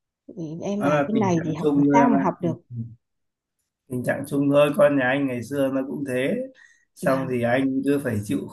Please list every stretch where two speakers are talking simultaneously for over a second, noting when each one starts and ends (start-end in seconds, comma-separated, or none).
0.8-2.2